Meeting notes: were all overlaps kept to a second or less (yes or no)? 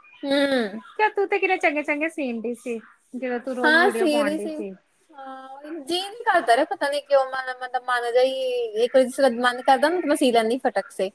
yes